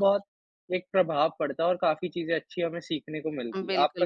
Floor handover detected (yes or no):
yes